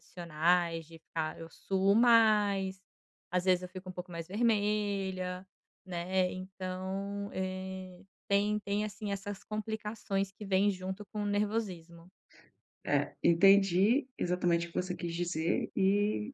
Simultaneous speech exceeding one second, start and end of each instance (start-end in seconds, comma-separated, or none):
none